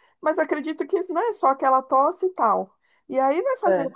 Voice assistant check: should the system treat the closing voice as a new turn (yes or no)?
no